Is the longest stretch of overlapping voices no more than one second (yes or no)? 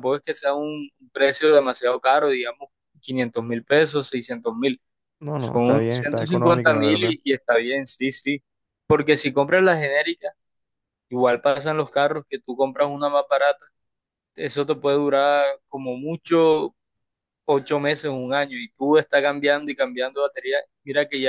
no